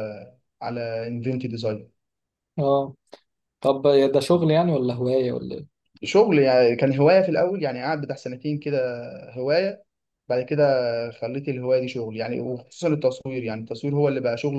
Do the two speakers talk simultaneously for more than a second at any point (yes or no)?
no